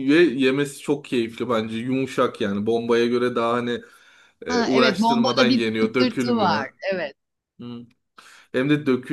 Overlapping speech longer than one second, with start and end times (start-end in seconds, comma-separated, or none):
4.5-6.7